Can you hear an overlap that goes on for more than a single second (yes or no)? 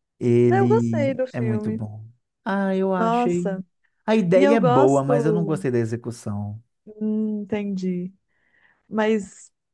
yes